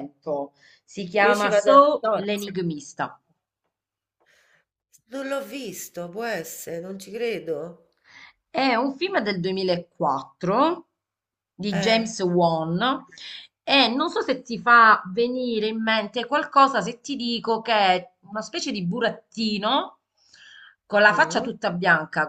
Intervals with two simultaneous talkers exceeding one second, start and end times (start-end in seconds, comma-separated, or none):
1.2-2.6